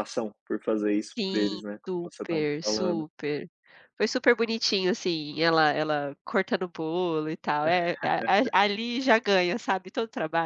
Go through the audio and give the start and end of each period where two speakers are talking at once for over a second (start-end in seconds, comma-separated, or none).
1.2-3.0